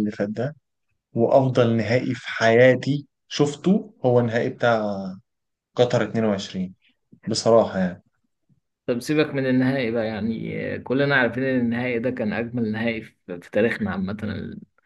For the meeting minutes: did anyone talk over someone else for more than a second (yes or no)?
no